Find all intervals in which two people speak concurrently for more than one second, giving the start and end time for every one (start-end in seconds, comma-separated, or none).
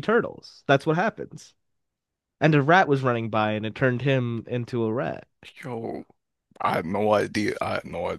none